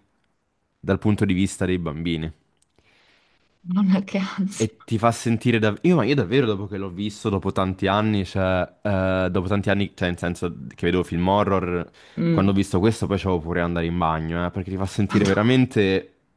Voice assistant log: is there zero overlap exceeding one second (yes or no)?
yes